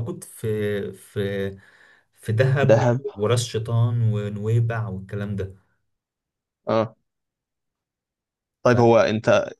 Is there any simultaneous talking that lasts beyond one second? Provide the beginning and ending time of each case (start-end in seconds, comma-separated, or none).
none